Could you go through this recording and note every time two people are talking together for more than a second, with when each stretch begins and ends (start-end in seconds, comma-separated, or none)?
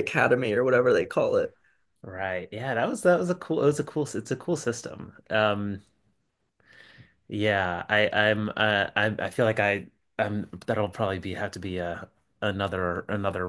none